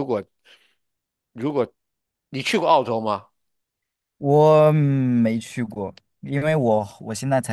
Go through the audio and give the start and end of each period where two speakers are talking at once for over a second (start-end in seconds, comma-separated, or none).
none